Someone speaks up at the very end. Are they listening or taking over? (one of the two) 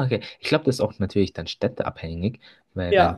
listening